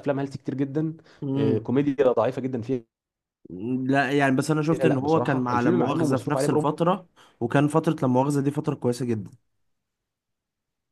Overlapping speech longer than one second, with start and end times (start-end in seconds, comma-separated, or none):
4.7-6.7